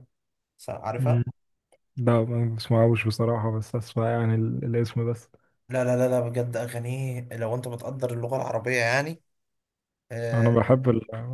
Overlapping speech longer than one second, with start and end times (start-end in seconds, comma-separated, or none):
none